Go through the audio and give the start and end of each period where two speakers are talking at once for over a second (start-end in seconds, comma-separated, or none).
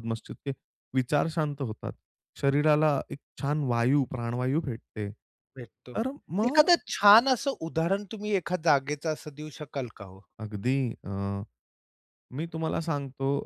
none